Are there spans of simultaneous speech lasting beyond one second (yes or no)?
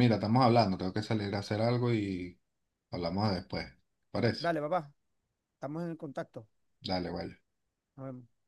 no